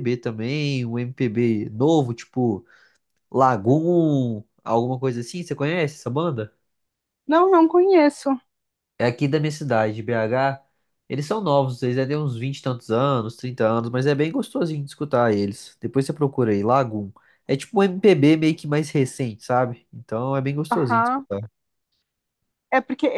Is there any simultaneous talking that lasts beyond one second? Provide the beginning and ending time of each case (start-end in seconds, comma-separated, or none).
none